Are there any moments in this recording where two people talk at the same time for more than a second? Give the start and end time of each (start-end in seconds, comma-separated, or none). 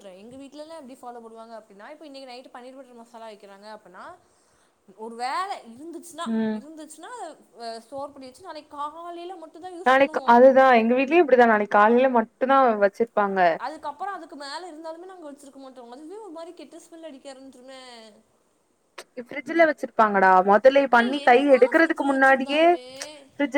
21.0-22.6